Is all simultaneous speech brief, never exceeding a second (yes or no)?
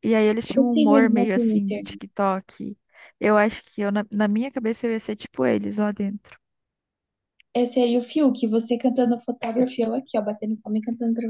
no